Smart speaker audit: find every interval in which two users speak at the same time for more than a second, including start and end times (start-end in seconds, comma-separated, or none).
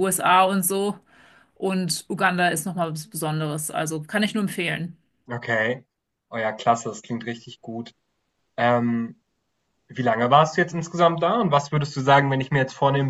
none